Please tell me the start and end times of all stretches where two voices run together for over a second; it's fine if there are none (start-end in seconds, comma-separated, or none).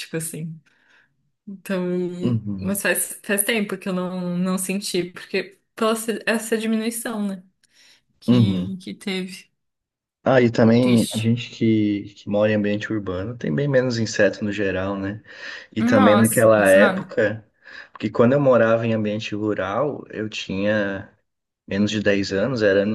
15.8-17.2